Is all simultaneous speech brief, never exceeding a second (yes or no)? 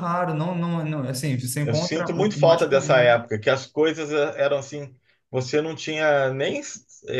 no